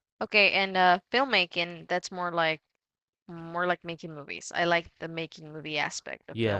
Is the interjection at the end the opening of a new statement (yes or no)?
yes